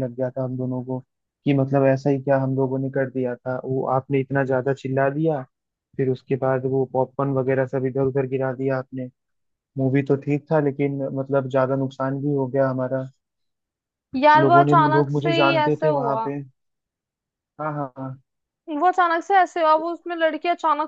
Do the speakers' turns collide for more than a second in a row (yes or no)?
yes